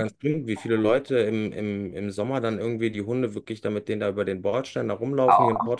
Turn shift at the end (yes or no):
no